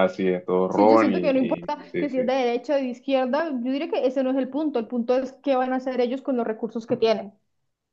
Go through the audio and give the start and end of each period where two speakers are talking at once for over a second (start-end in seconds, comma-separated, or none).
0.7-2.3